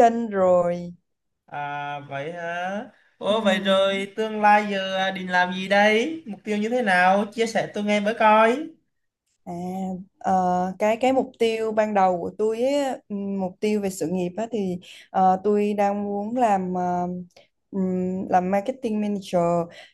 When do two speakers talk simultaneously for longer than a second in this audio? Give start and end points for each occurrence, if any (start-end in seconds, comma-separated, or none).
none